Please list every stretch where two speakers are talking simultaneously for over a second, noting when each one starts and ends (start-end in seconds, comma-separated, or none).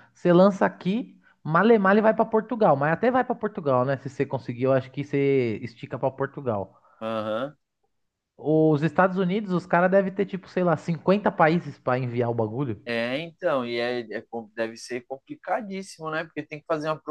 none